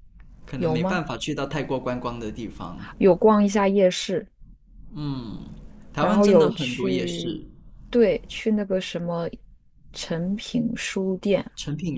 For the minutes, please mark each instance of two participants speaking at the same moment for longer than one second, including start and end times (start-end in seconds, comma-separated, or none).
6.0-7.4